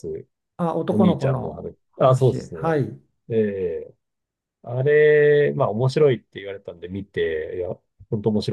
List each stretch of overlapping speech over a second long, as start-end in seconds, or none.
0.9-2.7